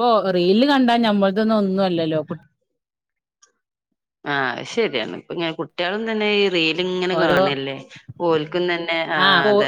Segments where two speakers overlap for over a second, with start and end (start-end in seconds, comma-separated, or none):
none